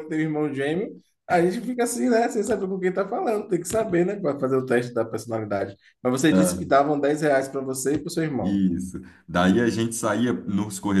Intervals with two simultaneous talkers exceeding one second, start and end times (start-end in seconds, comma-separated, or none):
none